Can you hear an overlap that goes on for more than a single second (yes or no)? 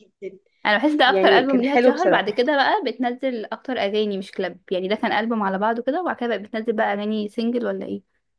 yes